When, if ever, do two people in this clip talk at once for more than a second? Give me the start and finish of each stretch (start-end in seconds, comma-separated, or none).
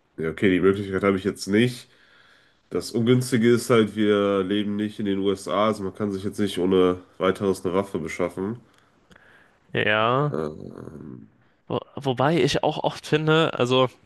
none